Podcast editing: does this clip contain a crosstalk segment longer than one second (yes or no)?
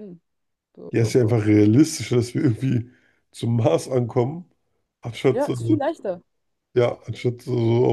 no